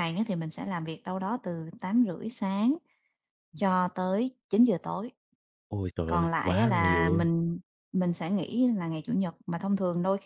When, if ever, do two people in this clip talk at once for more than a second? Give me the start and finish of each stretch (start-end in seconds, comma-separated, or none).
6.1-7.3